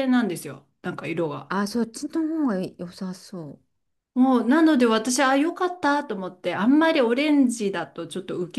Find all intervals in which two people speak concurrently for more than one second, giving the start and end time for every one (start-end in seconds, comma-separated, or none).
none